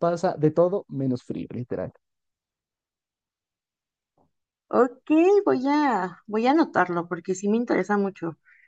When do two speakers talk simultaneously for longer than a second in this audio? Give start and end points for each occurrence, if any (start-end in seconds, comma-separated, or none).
none